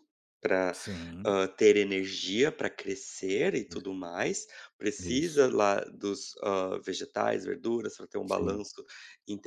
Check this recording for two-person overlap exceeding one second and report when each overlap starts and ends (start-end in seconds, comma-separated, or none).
none